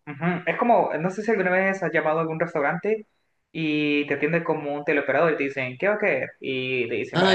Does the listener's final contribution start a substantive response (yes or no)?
no